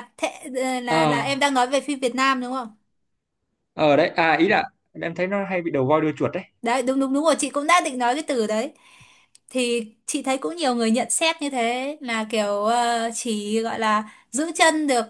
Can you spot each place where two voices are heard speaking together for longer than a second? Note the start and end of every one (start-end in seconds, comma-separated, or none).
none